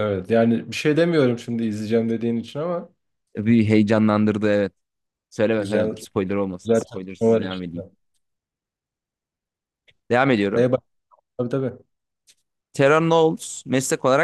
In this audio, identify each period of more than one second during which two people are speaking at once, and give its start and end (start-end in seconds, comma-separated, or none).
6.6-7.8